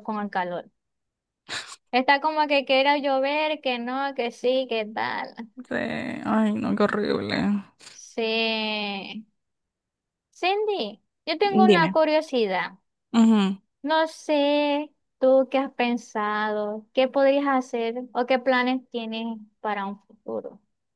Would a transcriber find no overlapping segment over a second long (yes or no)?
yes